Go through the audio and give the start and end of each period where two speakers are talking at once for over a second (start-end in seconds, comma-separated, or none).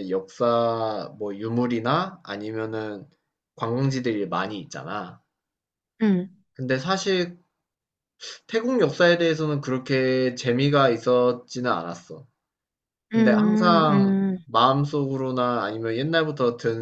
13.1-14.4